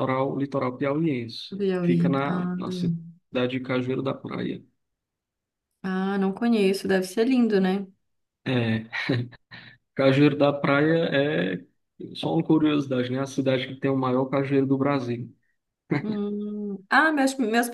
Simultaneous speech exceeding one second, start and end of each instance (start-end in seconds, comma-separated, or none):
1.5-3.0